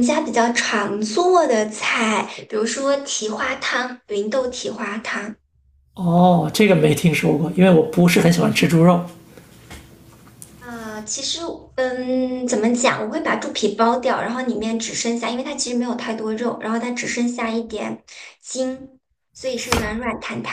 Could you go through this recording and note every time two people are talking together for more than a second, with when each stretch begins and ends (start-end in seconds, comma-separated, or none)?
none